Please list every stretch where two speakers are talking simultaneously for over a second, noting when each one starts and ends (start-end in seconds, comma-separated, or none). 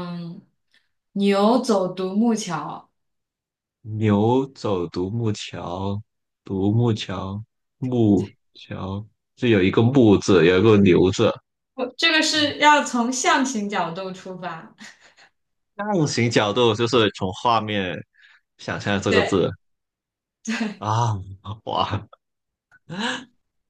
none